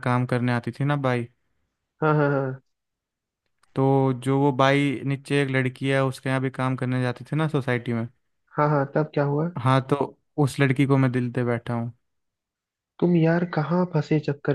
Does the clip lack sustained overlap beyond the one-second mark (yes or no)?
yes